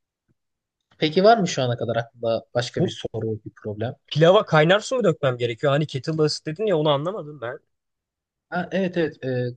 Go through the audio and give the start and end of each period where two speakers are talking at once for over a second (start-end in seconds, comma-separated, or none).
none